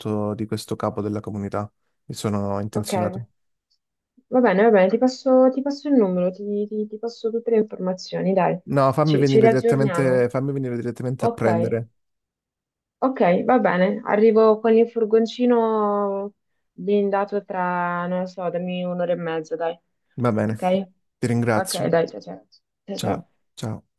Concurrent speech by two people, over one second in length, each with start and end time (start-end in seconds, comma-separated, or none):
9.0-10.3